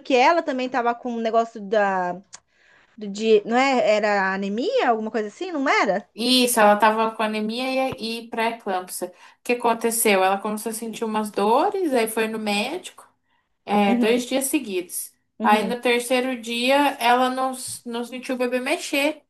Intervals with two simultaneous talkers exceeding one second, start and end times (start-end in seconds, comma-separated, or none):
none